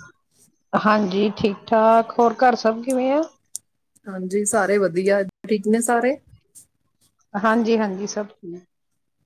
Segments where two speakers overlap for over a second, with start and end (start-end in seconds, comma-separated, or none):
none